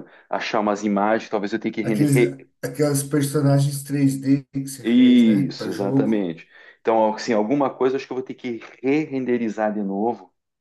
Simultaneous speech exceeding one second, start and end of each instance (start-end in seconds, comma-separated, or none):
4.8-6.3